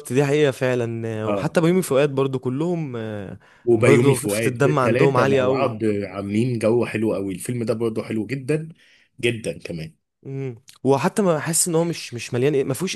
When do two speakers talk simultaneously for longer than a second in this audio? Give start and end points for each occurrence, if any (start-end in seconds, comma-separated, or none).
3.7-5.8